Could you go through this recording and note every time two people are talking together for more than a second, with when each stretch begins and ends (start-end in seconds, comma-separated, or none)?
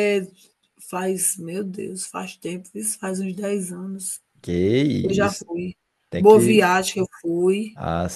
none